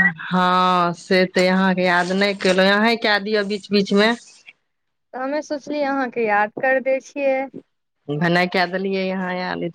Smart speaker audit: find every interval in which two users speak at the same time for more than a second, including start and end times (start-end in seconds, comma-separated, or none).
none